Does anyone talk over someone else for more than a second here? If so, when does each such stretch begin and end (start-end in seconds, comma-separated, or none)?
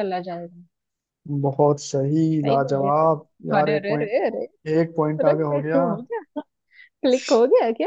2.4-4.1